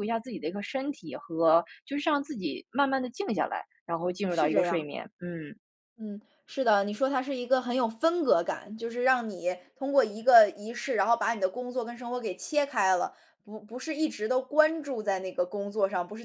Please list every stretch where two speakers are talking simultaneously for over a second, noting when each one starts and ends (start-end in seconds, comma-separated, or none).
none